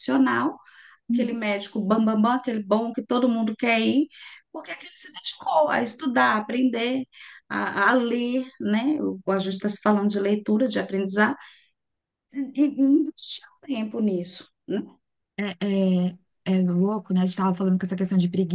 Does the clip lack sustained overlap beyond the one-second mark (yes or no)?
yes